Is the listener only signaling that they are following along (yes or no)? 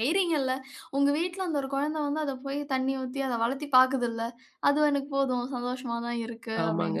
no